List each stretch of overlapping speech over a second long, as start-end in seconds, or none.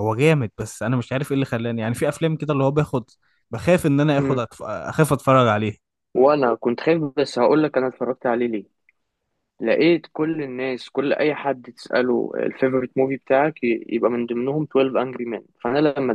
none